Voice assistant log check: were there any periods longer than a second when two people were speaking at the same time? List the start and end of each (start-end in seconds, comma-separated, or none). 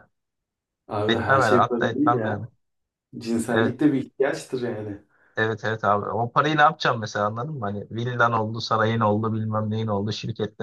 1.1-2.4